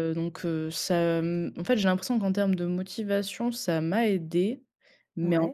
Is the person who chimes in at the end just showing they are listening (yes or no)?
yes